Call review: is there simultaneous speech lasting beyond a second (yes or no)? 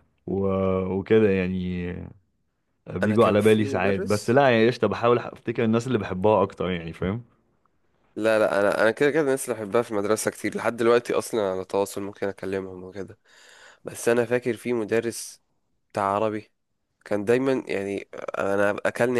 yes